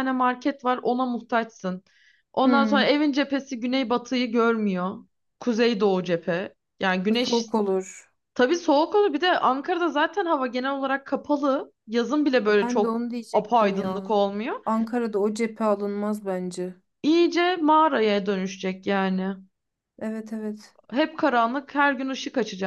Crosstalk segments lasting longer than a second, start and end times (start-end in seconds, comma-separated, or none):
12.6-14.2